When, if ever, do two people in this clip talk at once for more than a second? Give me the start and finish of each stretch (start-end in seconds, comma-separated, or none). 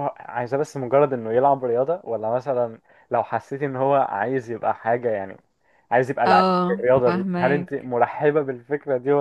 6.2-7.9